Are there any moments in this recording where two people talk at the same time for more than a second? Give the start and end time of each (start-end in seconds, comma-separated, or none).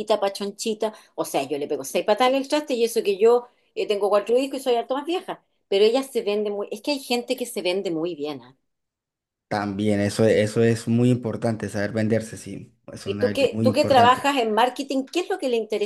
13.0-14.3